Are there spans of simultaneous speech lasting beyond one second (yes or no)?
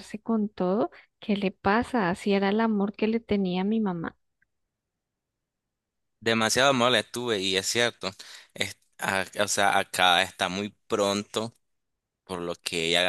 no